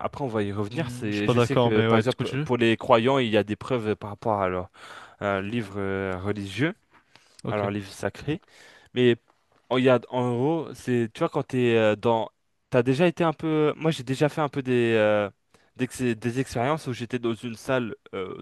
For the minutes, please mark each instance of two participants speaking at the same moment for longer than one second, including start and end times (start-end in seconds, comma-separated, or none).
0.7-2.5